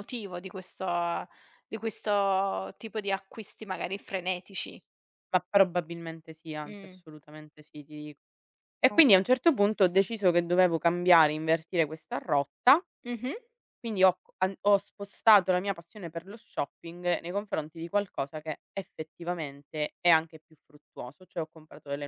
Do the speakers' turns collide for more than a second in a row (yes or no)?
no